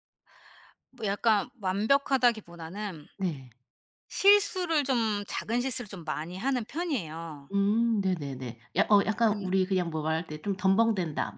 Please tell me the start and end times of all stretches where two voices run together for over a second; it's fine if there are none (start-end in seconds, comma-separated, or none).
none